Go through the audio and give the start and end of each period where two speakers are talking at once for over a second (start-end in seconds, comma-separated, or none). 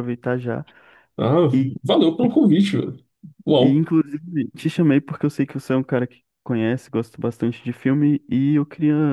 none